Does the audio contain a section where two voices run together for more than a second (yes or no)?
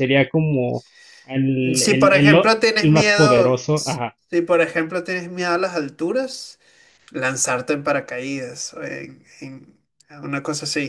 yes